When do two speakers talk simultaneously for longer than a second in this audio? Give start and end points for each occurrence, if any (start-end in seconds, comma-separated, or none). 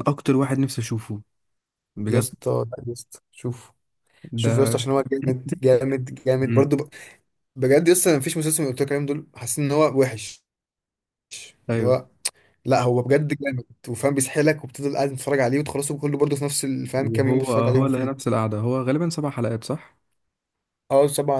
17.0-18.3